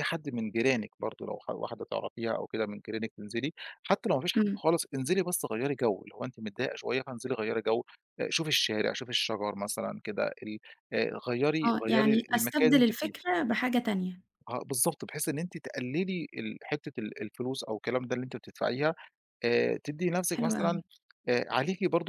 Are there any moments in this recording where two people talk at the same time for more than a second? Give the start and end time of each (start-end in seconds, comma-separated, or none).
11.6-13.1